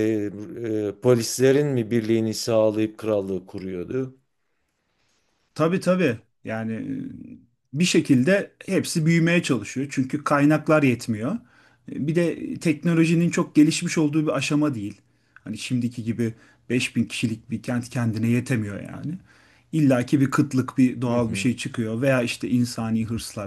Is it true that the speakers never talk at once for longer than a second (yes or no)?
yes